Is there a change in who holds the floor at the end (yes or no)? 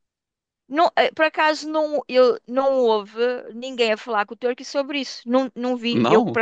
no